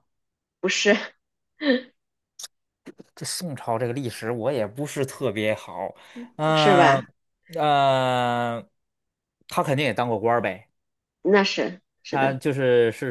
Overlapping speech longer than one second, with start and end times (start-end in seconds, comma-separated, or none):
none